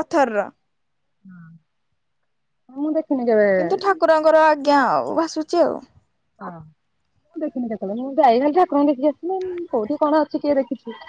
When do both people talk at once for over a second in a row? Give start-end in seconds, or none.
none